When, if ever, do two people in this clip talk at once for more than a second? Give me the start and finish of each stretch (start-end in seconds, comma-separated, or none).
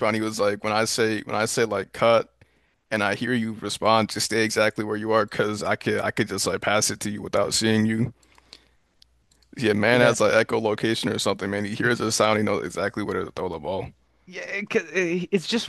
none